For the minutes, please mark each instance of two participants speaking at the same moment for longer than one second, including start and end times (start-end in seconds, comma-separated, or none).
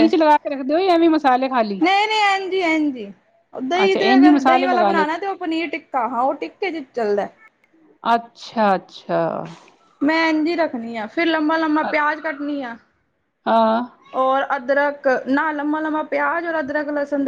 3.8-5.0